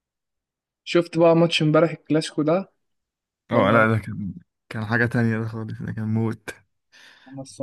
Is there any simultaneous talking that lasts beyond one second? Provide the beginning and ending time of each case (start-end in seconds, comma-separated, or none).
none